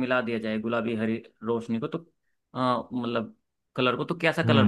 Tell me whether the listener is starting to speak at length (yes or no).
yes